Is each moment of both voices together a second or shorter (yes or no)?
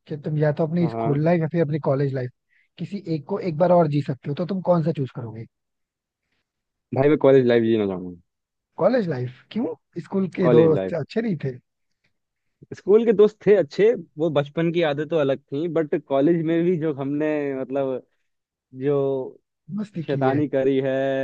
yes